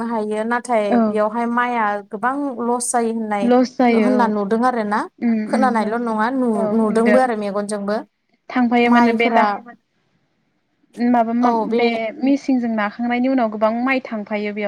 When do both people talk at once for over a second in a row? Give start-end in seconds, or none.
none